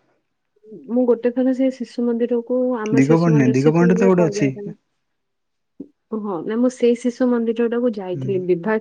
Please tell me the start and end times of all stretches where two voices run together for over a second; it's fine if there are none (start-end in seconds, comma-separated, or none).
3.0-4.5